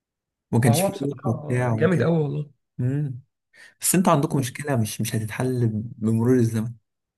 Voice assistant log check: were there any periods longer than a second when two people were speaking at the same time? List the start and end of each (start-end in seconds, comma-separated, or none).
0.6-2.1